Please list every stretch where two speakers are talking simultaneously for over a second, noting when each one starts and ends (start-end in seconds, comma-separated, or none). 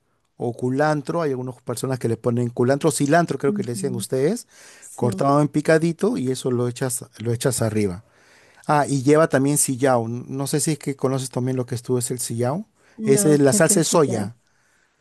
13.0-14.3